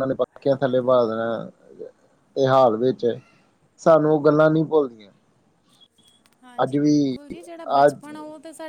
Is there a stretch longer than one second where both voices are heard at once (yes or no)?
no